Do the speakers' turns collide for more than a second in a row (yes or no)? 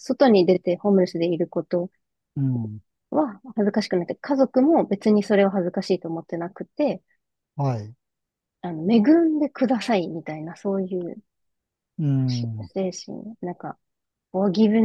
no